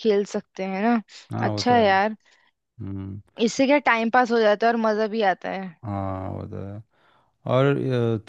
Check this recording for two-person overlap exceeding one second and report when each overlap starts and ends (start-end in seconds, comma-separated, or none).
none